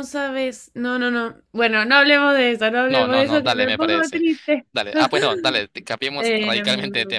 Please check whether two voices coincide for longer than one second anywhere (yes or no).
yes